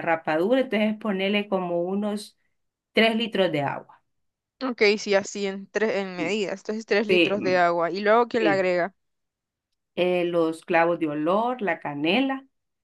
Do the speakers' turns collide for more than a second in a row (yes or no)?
no